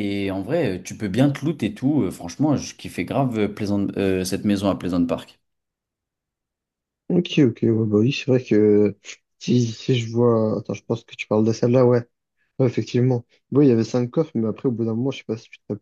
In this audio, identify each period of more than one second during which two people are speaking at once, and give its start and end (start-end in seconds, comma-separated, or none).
none